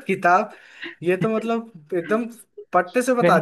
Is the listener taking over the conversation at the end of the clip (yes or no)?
no